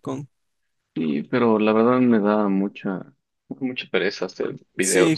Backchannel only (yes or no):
no